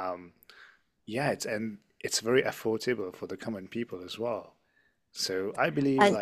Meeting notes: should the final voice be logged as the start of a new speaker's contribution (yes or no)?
no